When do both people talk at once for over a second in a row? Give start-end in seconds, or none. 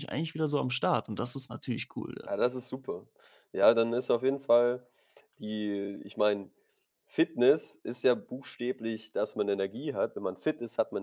none